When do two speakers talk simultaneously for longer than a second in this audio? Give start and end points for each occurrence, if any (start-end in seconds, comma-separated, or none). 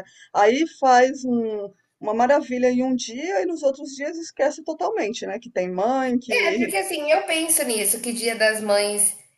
none